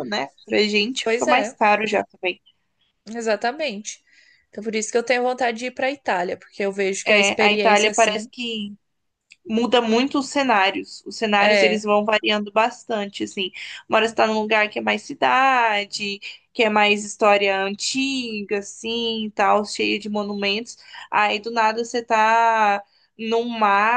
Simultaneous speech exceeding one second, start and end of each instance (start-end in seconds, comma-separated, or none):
7.0-8.3